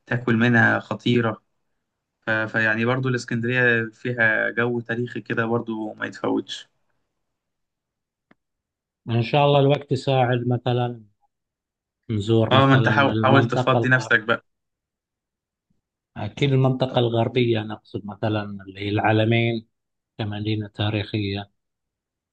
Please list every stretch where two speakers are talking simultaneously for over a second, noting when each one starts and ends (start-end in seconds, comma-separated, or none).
12.5-14.1